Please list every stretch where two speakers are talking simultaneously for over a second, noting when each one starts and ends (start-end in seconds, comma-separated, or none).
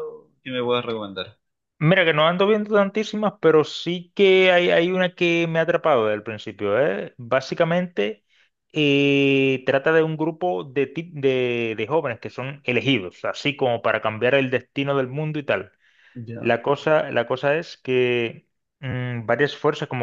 none